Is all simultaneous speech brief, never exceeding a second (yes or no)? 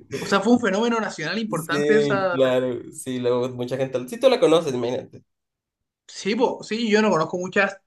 no